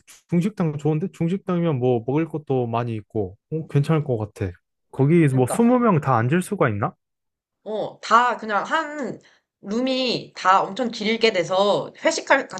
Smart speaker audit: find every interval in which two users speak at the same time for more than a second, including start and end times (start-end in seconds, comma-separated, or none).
none